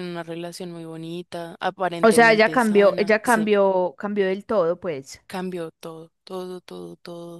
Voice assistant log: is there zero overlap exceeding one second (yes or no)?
no